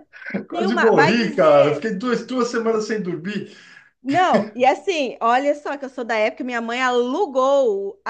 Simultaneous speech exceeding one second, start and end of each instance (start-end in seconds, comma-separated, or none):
0.5-1.9